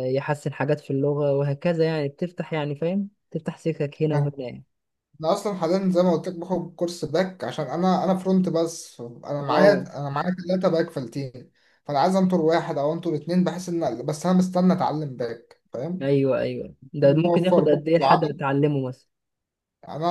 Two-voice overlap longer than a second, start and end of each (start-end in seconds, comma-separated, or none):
17.0-18.4